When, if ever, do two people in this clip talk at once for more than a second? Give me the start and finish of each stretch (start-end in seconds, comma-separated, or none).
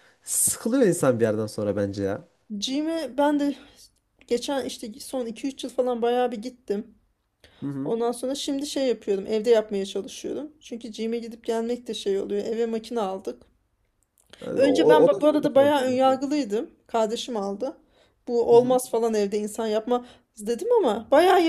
14.5-16.0